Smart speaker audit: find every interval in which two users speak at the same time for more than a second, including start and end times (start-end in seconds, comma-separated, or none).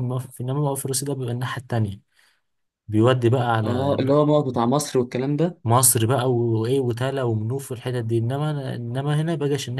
none